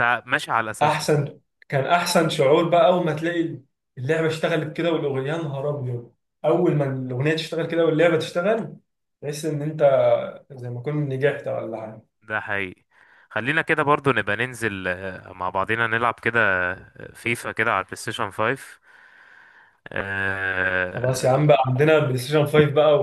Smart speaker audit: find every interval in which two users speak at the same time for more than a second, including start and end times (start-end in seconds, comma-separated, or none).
none